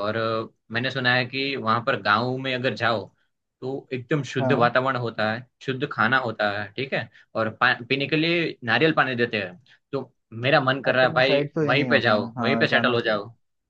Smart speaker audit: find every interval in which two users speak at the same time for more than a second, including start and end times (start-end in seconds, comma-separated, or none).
10.9-13.2